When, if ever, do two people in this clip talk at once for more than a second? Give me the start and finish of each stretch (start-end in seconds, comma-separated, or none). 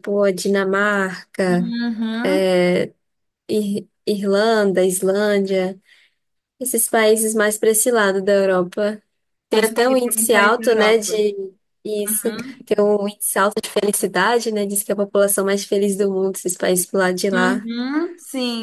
9.5-11.2